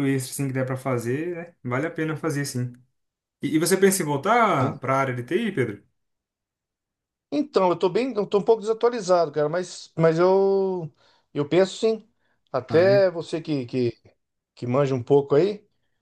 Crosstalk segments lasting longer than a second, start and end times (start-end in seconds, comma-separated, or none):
none